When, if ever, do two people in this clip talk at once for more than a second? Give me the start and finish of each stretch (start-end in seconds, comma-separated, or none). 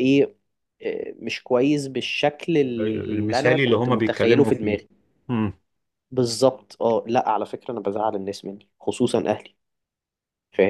2.8-4.8